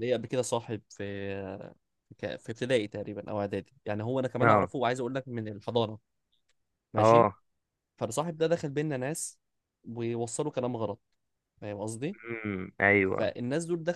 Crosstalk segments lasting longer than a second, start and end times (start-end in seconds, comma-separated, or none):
none